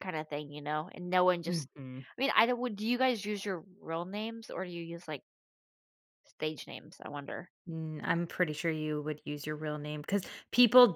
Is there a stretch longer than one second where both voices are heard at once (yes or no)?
no